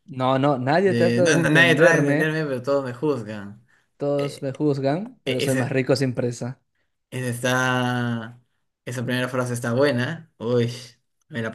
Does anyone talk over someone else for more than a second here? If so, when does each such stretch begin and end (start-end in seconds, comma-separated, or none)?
0.8-2.3